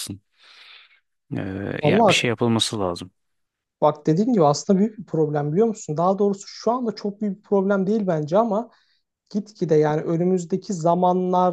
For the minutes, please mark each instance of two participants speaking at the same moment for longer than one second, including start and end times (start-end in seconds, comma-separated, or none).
none